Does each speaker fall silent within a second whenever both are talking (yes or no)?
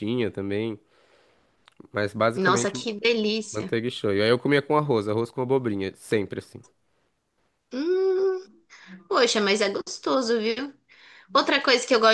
yes